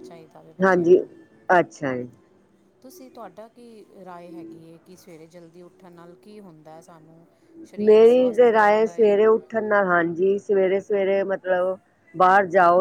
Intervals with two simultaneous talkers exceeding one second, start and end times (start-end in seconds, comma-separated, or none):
7.9-9.4